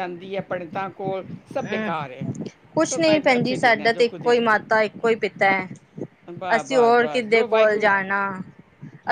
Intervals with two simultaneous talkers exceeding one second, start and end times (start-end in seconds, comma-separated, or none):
2.9-4.5, 6.5-7.9